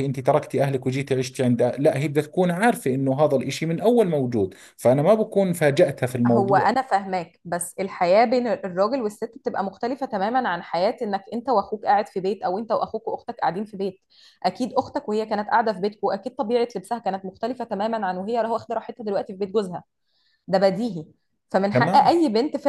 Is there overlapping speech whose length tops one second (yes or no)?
no